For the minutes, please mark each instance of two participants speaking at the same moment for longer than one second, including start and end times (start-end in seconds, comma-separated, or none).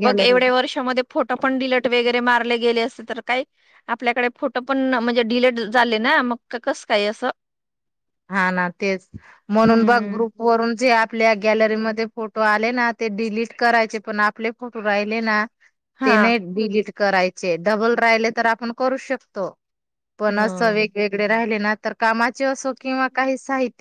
none